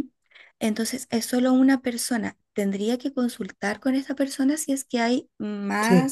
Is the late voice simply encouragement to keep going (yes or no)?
yes